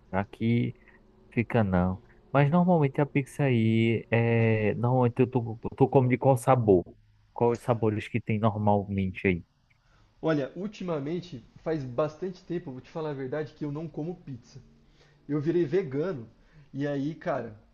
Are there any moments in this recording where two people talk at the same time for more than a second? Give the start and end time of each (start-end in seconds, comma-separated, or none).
none